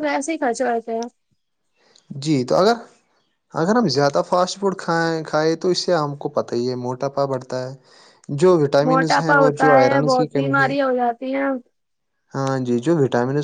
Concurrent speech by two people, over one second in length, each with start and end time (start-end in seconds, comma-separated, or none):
8.9-10.7